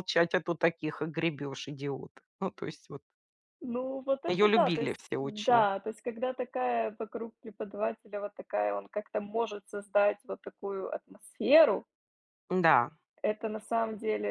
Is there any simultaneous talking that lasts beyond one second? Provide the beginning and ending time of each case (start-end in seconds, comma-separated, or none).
4.3-5.7